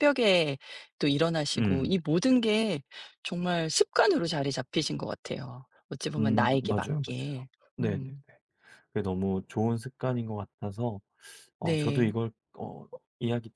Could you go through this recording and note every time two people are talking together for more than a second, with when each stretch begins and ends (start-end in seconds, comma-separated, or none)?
6.2-8.1